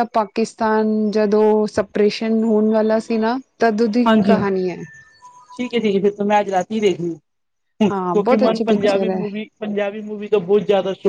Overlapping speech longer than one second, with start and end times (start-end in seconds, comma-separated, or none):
7.9-9.2